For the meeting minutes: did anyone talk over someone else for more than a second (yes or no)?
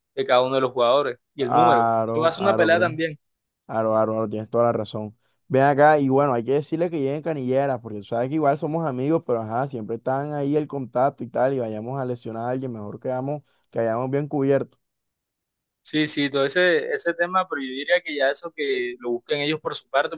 yes